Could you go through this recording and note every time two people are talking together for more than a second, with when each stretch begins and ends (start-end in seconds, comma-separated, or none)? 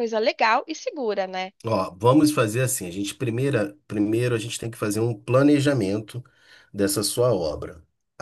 none